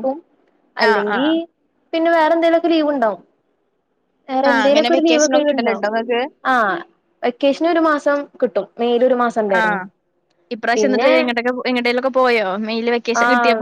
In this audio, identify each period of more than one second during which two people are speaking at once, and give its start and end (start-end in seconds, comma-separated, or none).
4.5-5.8